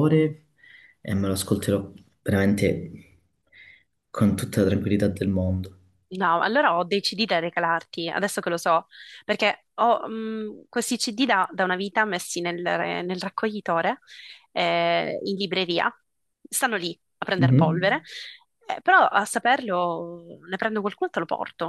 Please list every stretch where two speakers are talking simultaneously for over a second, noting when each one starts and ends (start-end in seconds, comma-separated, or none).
none